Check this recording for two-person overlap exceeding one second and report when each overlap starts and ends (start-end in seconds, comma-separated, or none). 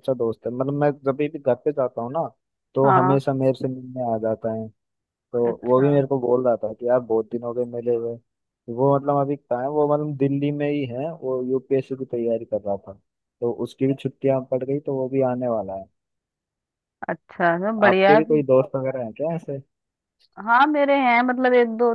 none